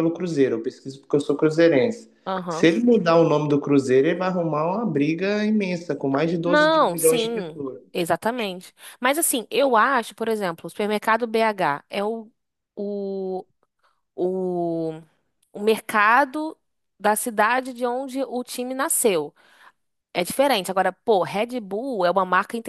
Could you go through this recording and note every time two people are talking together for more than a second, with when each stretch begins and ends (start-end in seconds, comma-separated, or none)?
6.4-7.8